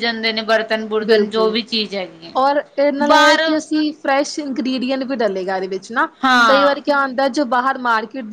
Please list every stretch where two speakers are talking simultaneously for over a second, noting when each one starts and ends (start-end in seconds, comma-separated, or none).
none